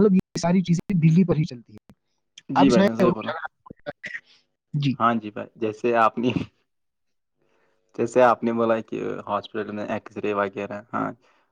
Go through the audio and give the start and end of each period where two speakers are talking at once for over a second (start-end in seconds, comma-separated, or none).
none